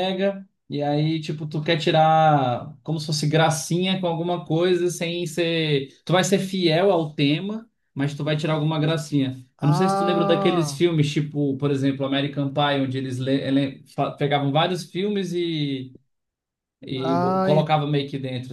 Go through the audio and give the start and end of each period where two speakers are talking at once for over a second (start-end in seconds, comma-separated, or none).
9.6-10.8